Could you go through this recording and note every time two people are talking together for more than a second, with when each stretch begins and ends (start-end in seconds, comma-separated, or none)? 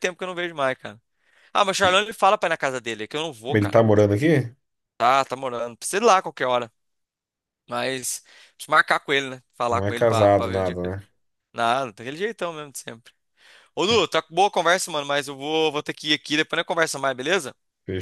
9.7-10.9